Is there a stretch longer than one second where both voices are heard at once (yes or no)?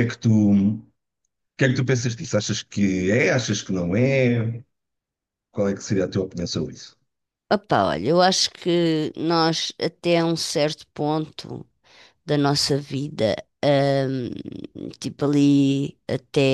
no